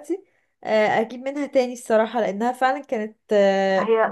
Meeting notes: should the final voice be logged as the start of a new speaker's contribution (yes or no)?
yes